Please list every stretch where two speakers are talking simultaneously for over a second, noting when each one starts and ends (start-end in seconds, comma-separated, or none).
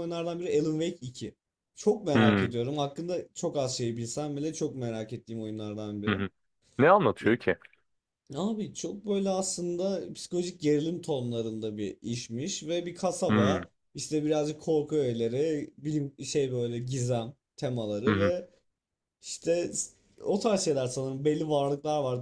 none